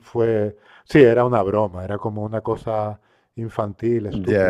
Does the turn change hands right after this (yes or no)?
yes